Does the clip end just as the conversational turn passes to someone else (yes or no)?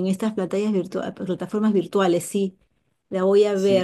yes